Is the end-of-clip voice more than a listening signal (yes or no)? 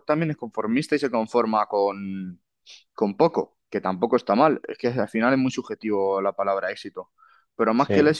no